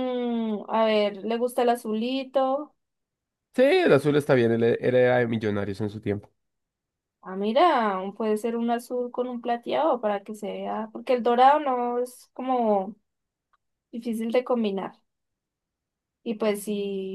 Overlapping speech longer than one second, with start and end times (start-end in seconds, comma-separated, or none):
none